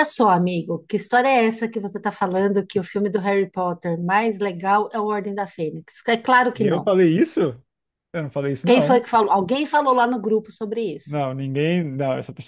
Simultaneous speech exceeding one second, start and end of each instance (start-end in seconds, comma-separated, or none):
none